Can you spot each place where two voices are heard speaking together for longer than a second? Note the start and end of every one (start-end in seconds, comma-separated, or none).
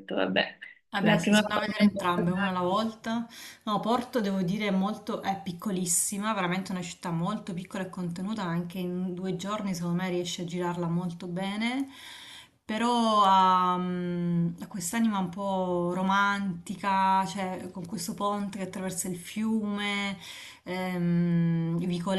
1.0-2.5